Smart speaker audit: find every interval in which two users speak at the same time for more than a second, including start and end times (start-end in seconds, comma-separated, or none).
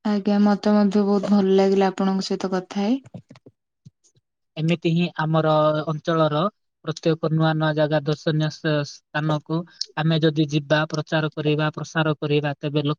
none